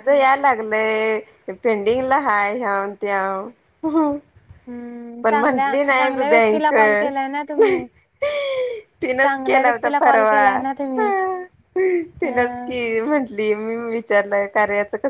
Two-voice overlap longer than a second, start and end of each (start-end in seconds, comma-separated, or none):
5.2-6.7, 9.2-10.6